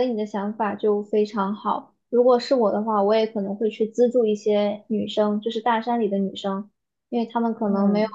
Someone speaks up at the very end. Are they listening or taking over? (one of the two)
listening